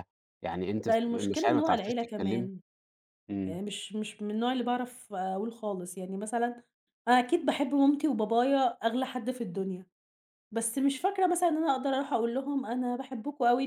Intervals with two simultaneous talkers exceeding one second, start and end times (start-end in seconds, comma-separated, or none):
0.8-2.5